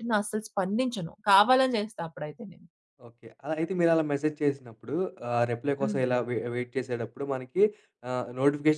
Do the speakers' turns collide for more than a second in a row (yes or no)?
no